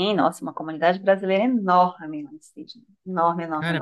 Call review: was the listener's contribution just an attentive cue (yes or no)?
no